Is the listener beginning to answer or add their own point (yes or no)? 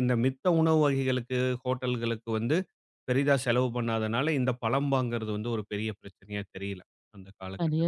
yes